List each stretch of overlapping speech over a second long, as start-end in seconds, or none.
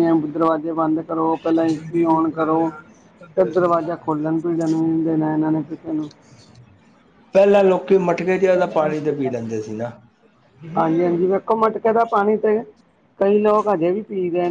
none